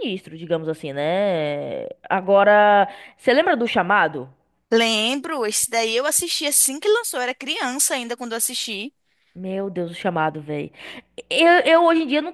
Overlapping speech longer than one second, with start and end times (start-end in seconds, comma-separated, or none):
none